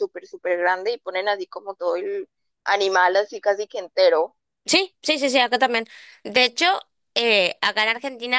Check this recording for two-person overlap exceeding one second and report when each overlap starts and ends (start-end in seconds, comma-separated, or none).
none